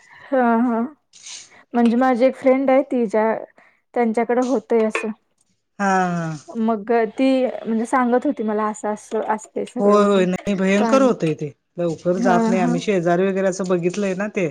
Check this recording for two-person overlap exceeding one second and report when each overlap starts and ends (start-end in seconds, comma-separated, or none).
none